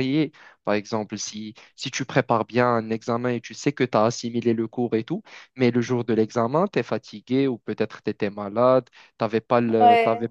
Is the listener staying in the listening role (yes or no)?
yes